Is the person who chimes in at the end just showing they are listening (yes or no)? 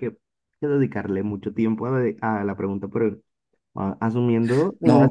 yes